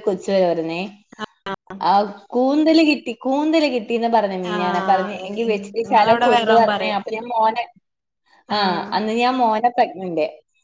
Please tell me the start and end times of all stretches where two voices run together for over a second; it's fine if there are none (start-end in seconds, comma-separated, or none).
4.6-7.0